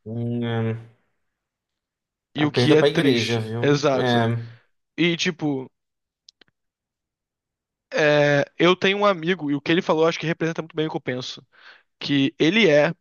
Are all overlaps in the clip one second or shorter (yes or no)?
no